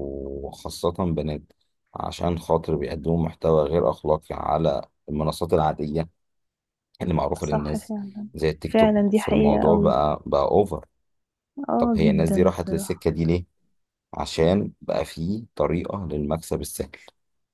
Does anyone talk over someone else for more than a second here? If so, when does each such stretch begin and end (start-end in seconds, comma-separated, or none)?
8.7-9.9, 11.8-13.1